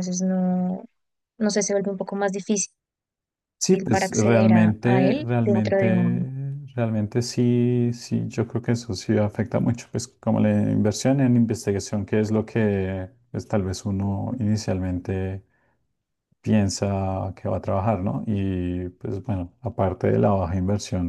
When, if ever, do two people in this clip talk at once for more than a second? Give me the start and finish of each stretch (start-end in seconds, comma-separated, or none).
3.7-6.2